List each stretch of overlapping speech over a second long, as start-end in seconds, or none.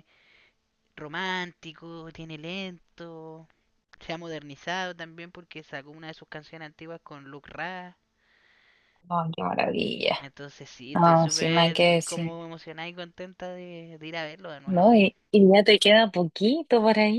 10.9-12.3